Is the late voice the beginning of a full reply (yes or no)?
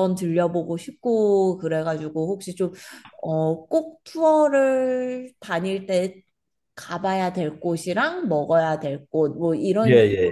no